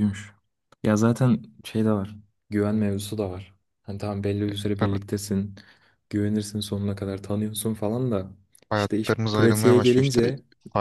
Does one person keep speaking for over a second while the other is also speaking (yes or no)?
yes